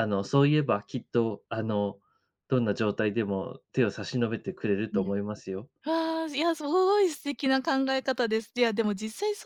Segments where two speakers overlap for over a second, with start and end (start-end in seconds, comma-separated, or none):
none